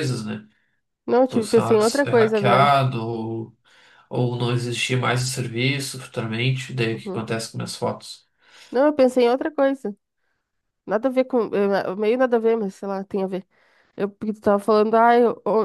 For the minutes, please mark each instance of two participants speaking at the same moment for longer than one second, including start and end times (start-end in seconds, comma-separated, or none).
1.1-2.7